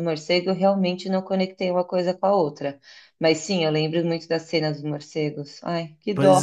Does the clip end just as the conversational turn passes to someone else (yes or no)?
yes